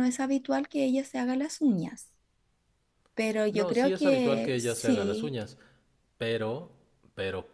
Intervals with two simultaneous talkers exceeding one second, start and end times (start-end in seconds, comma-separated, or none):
3.5-5.4